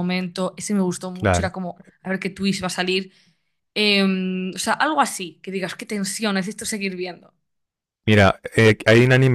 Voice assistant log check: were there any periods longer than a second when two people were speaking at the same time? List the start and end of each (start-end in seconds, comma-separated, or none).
none